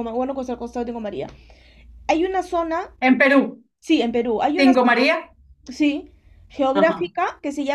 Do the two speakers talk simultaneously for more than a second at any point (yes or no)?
no